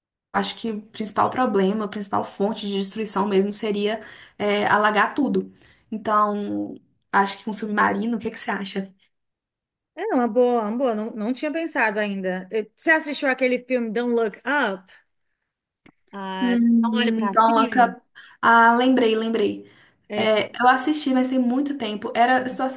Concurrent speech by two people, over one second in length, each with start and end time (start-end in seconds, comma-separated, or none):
16.4-17.9